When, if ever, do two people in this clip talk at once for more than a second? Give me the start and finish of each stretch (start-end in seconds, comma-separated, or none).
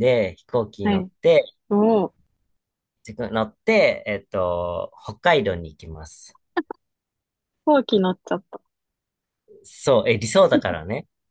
none